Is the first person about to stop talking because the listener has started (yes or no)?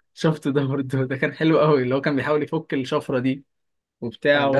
yes